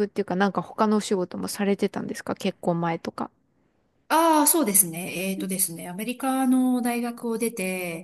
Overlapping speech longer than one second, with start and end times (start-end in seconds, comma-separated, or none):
none